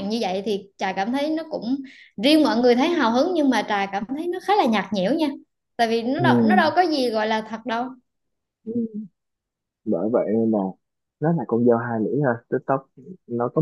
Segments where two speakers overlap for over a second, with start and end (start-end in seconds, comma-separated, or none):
none